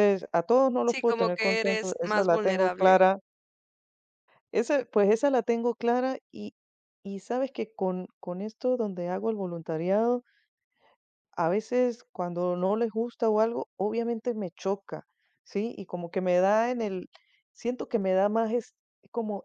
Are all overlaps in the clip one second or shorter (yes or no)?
no